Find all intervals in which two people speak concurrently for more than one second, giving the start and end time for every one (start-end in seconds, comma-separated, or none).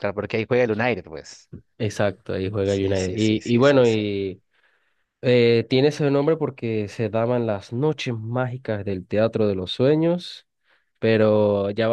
2.6-4.1